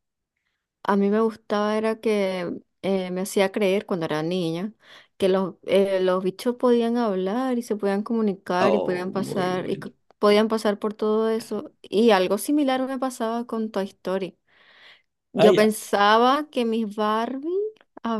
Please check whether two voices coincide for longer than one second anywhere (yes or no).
yes